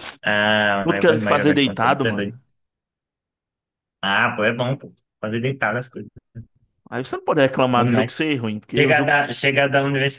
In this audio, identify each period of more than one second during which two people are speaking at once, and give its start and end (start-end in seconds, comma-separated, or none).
0.8-2.4